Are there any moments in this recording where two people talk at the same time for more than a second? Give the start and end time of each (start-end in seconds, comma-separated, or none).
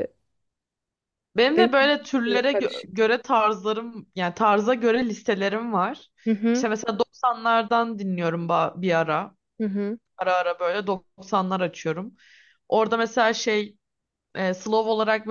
1.6-3.1